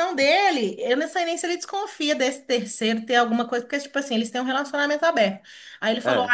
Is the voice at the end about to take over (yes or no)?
no